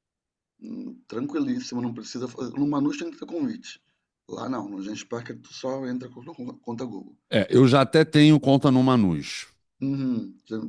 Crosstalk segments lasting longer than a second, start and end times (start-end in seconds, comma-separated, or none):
none